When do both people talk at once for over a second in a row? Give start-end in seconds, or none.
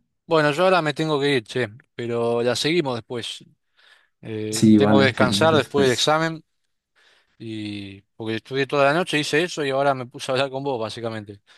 4.5-6.2